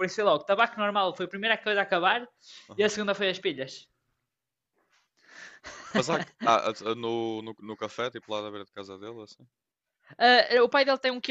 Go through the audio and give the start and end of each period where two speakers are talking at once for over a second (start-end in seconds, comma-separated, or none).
none